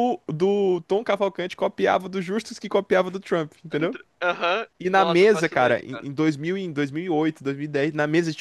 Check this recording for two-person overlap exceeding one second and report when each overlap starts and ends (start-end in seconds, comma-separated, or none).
4.8-6.1